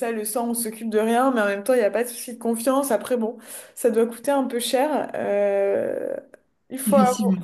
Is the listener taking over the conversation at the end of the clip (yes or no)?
no